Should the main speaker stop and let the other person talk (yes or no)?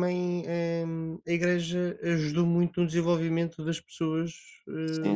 yes